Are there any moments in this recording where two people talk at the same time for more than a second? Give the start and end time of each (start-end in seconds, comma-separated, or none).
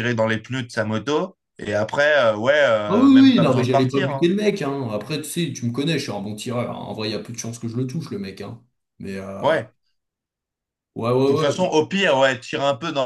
2.9-4.3